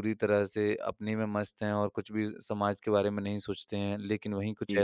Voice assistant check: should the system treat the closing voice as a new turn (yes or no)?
no